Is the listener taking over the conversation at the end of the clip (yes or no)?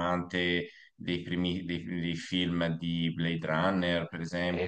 yes